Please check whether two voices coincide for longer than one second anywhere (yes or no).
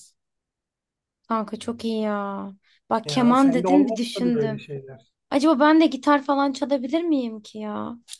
yes